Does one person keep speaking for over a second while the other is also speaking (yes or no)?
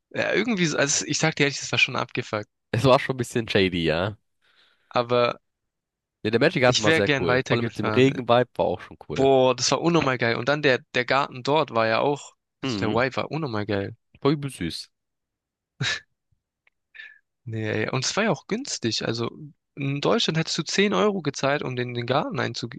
yes